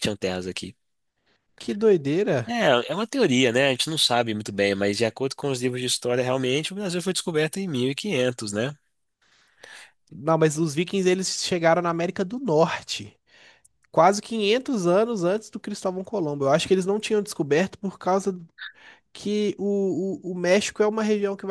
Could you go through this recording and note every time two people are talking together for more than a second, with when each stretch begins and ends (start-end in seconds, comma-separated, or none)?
none